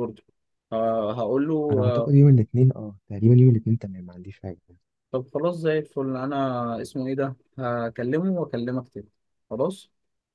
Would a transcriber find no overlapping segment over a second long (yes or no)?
yes